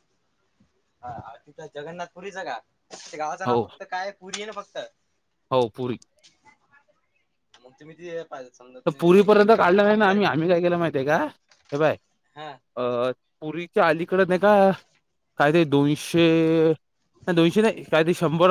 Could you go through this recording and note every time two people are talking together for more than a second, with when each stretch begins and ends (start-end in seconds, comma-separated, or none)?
8.9-10.2